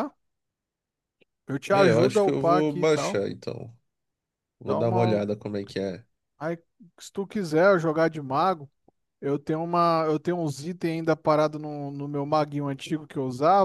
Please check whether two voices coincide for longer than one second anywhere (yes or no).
yes